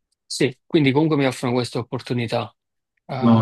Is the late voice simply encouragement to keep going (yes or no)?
no